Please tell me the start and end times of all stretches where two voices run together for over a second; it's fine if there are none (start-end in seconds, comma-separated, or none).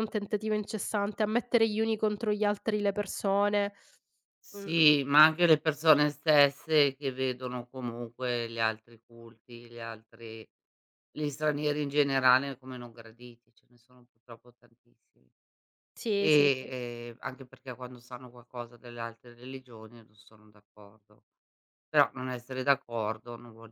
none